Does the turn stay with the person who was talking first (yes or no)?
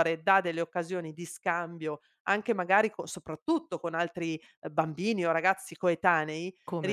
yes